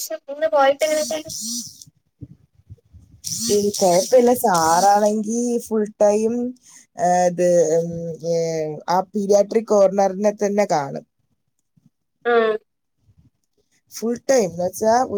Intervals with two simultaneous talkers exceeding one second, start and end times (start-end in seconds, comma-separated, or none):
none